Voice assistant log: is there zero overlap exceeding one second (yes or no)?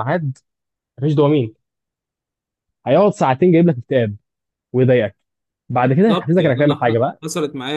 no